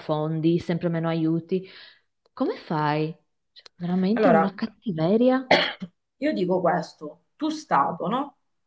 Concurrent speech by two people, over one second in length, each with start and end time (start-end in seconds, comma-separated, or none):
none